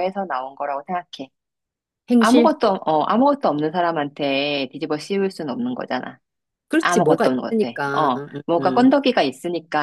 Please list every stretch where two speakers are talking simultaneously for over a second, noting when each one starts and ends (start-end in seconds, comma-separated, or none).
6.8-8.9